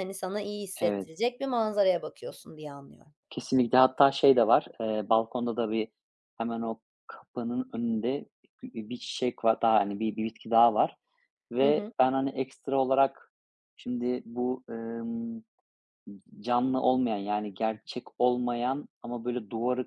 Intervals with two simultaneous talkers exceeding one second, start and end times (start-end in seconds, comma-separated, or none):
none